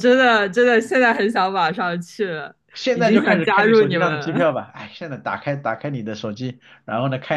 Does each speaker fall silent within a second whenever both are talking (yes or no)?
no